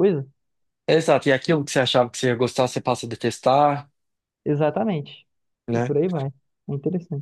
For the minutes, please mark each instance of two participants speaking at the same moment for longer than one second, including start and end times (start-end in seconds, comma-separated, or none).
none